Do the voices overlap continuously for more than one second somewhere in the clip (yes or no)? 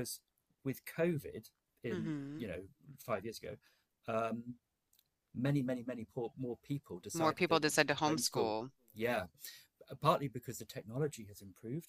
yes